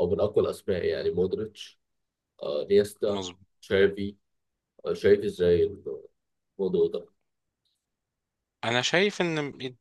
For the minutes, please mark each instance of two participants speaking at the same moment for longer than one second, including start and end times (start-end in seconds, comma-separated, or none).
none